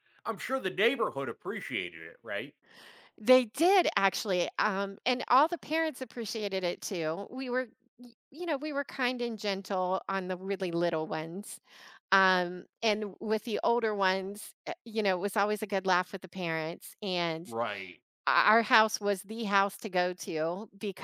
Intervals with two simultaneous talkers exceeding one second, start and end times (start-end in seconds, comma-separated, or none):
none